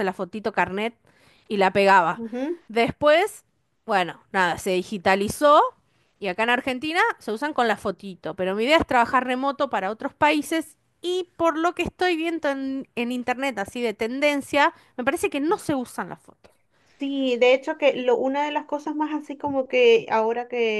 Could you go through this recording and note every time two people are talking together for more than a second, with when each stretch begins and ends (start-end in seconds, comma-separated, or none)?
none